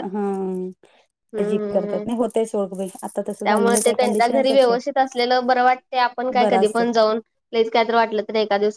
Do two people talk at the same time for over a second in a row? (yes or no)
yes